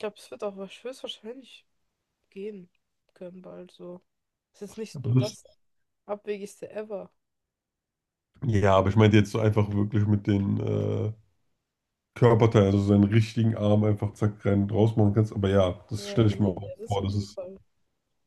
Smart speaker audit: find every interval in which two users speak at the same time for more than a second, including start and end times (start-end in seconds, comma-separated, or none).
15.9-17.4